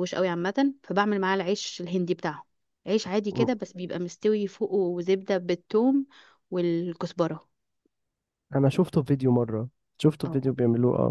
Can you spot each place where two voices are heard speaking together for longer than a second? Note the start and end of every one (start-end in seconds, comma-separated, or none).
none